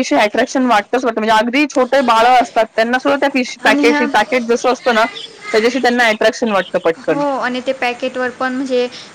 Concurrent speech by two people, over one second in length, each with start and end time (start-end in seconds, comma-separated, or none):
none